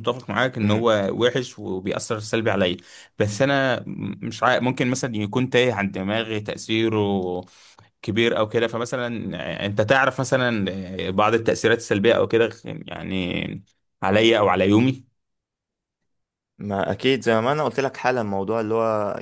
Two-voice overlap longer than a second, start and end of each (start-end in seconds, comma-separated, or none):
none